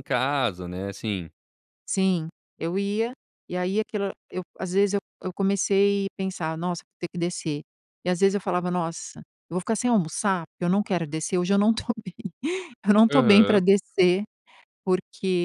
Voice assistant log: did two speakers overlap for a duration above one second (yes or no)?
no